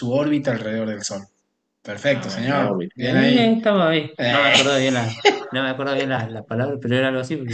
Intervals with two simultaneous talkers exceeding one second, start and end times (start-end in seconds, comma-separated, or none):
2.0-3.6